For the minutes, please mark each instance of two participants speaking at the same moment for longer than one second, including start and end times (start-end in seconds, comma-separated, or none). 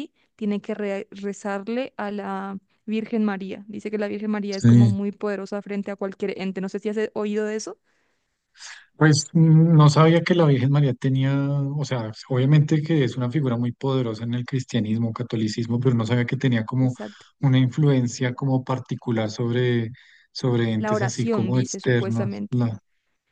20.8-22.7